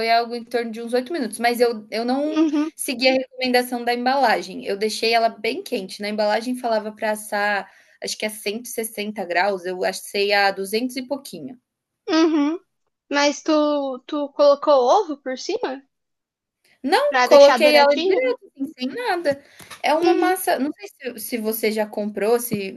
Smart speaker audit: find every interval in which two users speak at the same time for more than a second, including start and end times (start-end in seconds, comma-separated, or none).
17.1-18.4